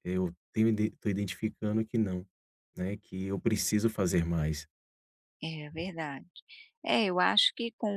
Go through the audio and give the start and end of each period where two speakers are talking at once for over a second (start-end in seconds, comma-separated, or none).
none